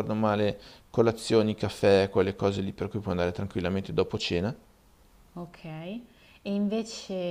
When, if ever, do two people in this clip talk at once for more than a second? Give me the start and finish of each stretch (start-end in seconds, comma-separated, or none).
none